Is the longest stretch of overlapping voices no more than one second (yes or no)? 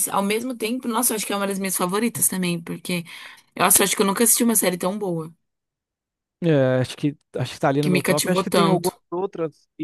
no